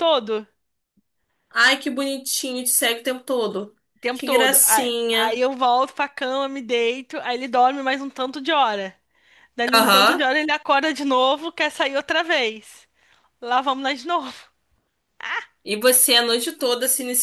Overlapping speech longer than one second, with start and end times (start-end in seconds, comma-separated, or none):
4.1-5.5